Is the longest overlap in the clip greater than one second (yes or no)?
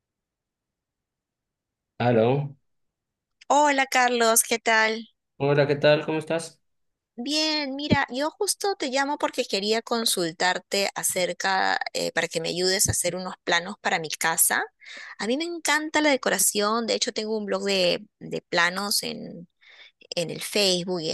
no